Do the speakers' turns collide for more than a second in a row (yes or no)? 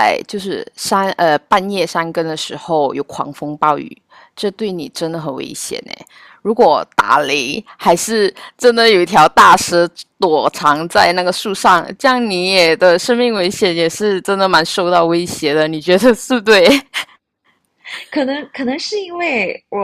no